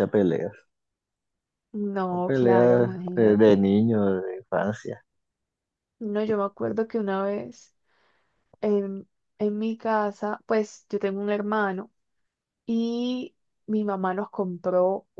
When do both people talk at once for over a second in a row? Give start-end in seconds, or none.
2.1-3.6